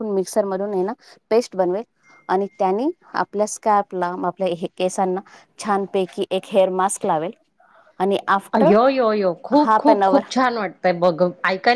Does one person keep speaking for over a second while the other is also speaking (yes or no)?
no